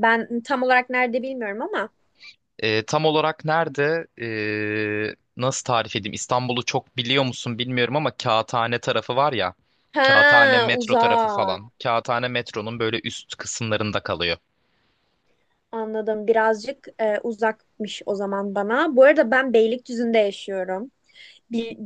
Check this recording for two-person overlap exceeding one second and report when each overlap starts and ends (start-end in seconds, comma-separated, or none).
10.1-11.6